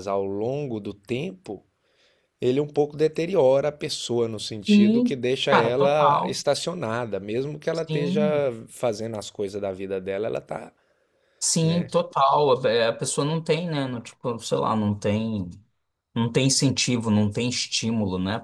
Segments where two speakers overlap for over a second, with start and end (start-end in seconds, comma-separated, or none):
4.7-6.4